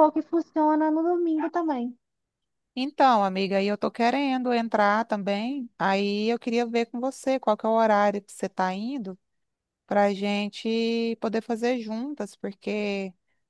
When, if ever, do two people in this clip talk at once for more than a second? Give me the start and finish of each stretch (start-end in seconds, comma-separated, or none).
none